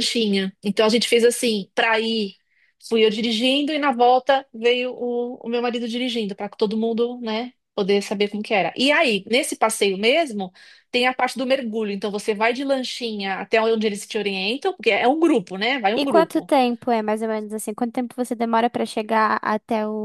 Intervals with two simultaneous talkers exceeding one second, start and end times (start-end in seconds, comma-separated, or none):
none